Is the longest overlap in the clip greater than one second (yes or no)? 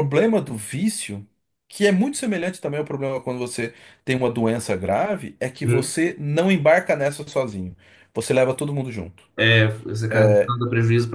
no